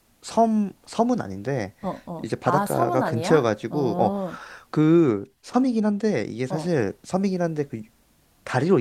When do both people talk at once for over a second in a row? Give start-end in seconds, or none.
2.2-4.2